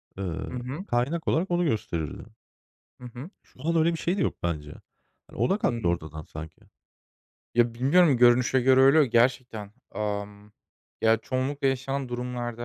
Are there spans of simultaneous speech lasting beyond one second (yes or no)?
no